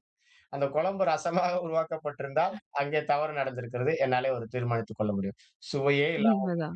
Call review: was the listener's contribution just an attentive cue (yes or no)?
yes